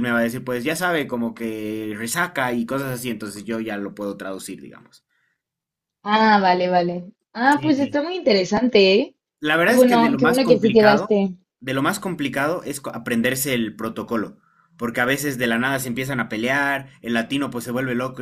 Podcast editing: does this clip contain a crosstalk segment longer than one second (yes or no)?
yes